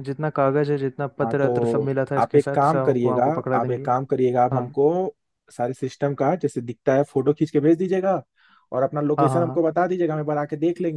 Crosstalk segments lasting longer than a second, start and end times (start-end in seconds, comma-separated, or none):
1.2-3.9